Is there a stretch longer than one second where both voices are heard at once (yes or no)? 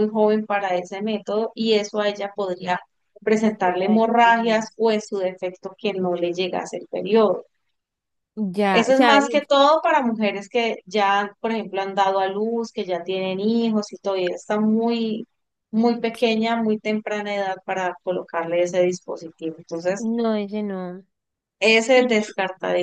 yes